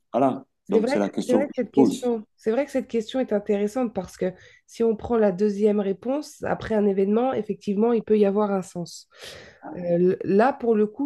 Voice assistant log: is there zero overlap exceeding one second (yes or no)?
no